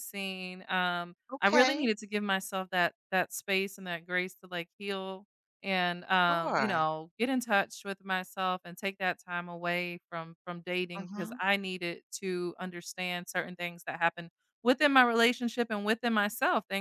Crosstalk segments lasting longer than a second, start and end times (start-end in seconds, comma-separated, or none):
none